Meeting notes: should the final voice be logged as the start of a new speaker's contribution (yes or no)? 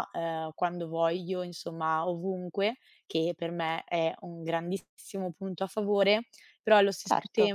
no